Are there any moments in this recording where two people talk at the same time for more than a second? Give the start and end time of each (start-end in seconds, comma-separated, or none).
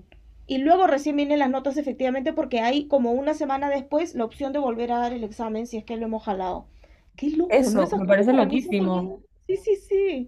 7.5-9.1